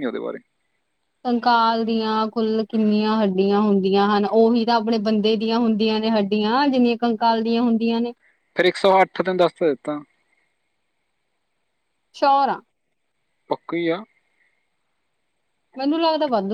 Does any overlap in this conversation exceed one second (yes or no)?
no